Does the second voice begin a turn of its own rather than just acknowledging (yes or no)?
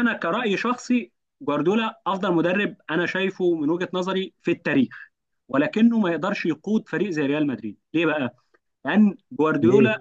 no